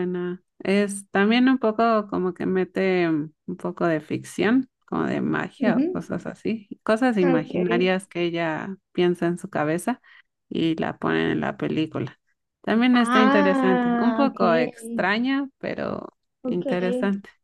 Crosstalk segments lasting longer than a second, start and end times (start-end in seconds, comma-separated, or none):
12.9-15.0